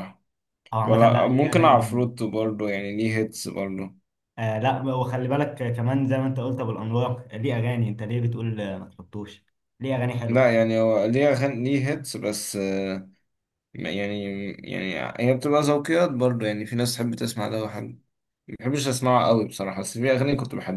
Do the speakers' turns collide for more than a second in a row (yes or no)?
yes